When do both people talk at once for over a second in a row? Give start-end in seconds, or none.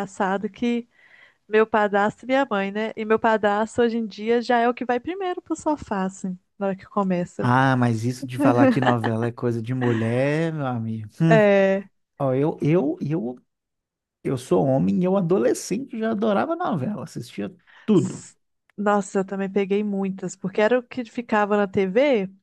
none